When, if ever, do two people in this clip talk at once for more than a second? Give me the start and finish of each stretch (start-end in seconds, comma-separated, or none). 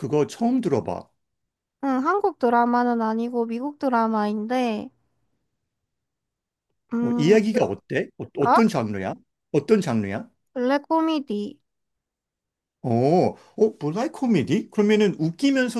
none